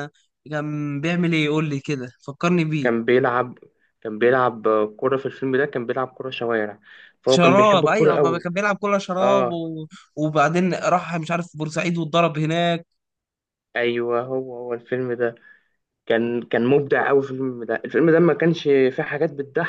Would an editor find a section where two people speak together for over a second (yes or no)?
yes